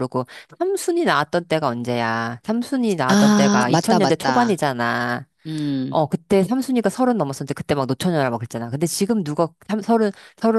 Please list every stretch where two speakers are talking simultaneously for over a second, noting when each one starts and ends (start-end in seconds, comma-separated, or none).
3.1-4.5